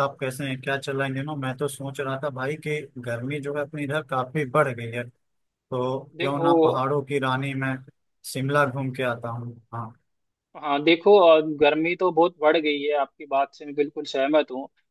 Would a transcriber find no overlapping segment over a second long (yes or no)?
yes